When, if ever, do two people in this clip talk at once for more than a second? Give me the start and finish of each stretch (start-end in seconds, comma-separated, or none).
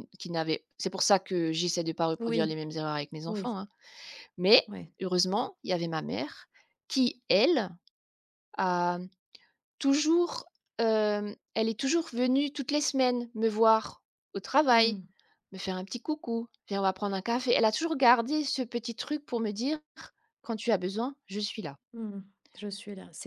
none